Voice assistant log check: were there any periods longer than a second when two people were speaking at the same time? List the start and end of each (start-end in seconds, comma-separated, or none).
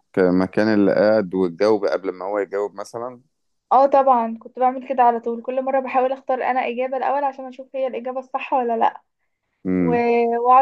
none